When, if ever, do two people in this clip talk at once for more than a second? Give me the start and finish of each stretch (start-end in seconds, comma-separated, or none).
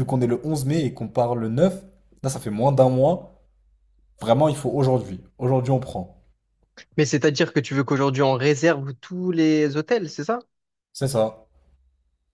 none